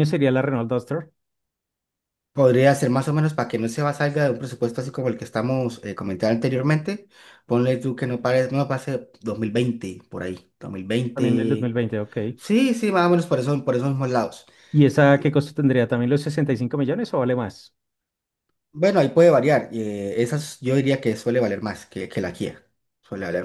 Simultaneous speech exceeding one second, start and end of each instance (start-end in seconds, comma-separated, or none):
none